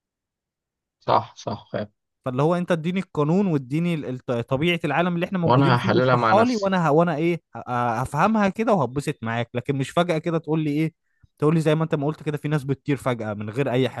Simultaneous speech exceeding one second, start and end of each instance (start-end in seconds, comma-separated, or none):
5.4-6.7